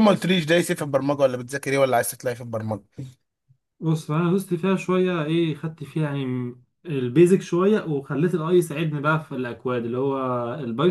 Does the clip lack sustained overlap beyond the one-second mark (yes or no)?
yes